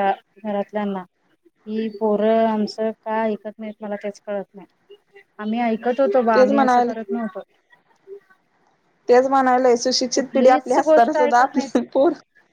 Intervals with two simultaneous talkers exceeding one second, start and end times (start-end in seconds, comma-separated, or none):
10.1-11.7